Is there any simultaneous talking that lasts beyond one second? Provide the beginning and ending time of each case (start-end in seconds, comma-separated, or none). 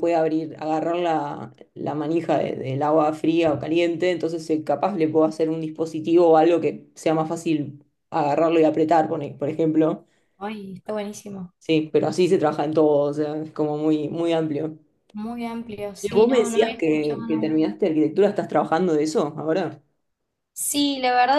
16.0-17.6